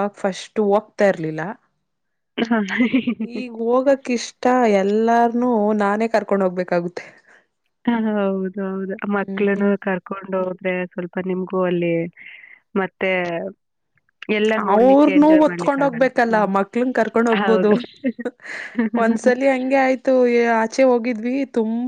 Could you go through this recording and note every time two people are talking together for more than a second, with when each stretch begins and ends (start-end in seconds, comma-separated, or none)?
14.8-16.5